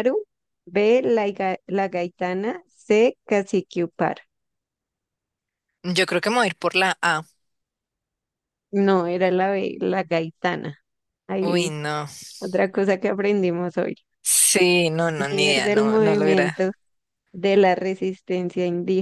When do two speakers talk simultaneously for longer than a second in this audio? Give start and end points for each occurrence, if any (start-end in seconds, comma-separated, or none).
15.3-16.6